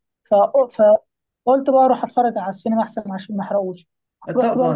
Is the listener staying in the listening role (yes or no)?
no